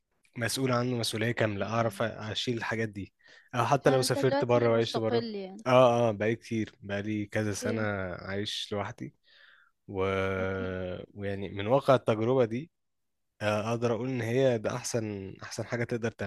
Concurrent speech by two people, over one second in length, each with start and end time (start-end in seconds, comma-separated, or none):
3.8-5.2